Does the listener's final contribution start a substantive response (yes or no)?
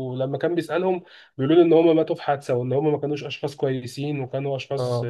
no